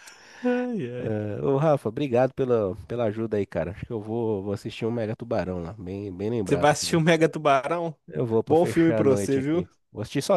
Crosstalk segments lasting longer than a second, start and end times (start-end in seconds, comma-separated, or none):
8.4-9.7